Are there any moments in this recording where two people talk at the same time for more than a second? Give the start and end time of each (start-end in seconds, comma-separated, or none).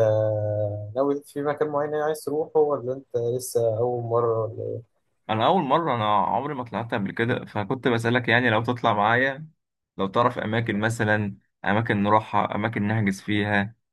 none